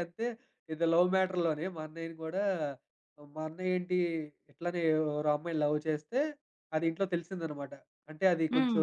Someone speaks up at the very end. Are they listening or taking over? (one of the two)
listening